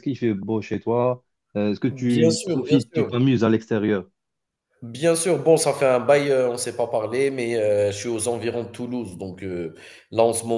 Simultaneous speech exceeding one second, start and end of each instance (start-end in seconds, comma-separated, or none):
1.9-3.1